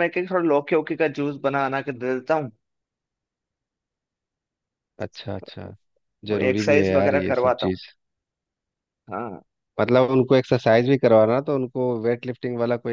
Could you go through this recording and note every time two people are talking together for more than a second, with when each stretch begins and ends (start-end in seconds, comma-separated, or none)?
6.3-7.8